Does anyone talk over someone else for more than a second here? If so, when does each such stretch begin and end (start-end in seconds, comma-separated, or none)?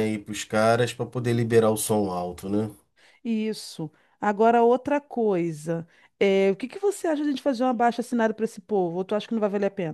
none